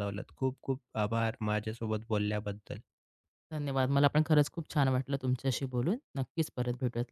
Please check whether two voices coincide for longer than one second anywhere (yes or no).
no